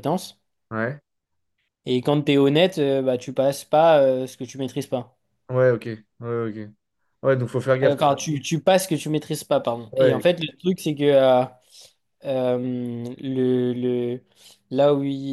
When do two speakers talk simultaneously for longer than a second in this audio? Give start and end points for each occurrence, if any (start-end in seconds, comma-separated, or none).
none